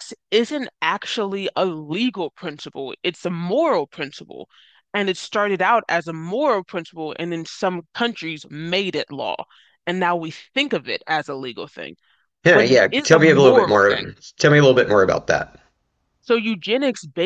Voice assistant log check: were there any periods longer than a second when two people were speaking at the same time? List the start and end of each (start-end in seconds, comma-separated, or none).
12.5-14.1